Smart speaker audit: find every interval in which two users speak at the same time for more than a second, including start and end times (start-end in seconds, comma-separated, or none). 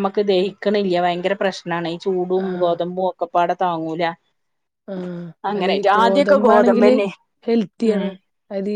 5.6-6.9